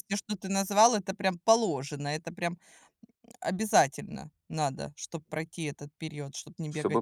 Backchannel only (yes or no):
no